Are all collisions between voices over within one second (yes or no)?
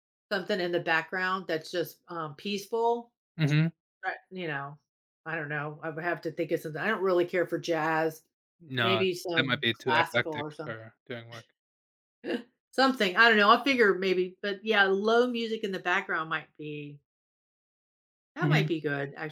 no